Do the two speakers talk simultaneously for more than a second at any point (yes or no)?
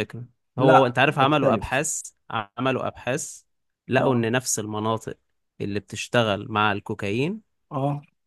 yes